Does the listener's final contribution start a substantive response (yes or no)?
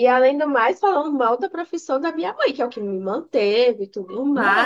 no